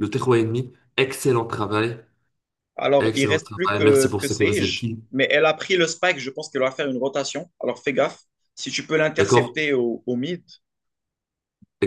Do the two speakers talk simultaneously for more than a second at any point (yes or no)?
yes